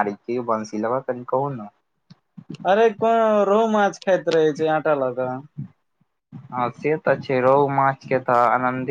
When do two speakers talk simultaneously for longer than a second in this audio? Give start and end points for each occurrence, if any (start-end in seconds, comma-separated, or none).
none